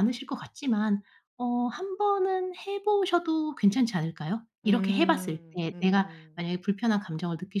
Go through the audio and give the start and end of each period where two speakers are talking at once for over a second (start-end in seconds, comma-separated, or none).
4.6-6.5